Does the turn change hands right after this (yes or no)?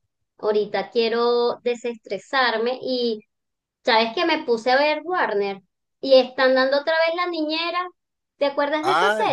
yes